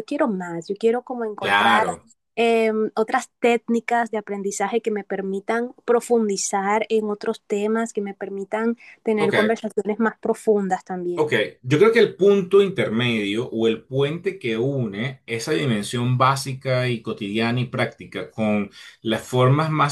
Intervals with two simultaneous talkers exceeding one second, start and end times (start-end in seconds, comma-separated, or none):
none